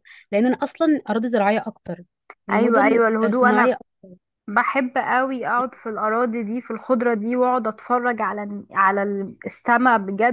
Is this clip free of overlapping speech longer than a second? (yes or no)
no